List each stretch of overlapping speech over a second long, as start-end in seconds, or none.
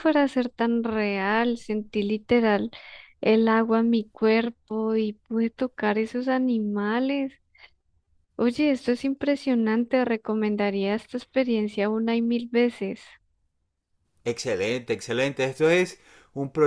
none